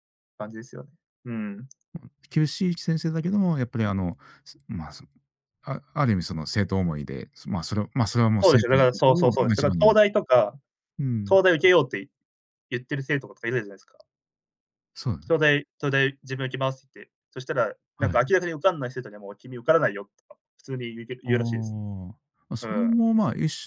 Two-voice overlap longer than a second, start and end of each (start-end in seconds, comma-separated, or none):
8.4-10.0